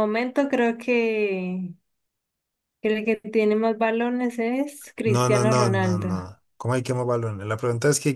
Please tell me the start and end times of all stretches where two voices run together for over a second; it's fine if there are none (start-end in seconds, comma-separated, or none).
5.0-6.3